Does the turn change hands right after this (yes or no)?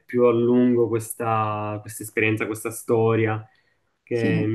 no